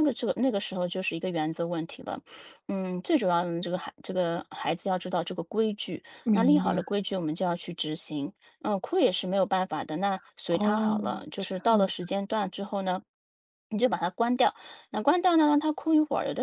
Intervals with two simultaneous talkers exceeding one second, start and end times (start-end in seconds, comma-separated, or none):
10.5-11.9